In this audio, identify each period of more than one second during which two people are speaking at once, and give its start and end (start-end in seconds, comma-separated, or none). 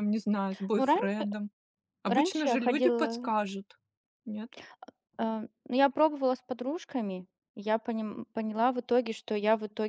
2.0-3.3